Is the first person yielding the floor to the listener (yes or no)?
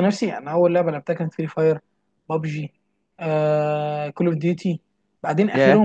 no